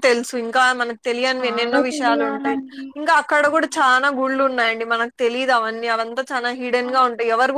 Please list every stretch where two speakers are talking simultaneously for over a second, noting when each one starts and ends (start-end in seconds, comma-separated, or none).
1.3-2.6